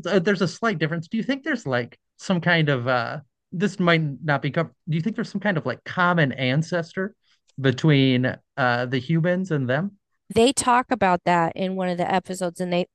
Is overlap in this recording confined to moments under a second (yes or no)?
yes